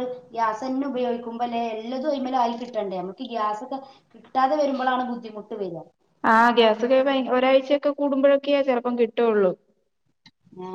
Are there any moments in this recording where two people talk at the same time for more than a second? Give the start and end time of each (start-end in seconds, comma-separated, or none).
none